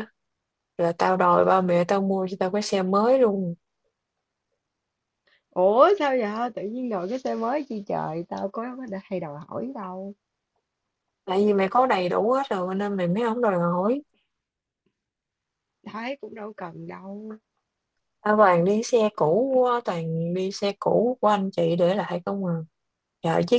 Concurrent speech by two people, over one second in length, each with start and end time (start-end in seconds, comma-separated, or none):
none